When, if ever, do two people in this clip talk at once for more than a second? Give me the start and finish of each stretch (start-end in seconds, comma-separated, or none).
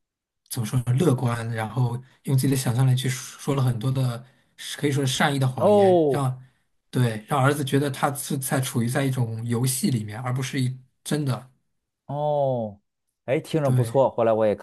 none